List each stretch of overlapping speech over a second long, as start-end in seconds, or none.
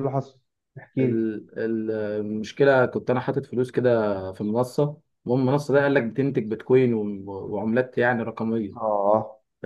none